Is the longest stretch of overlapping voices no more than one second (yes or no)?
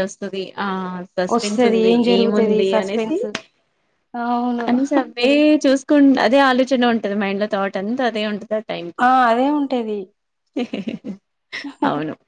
no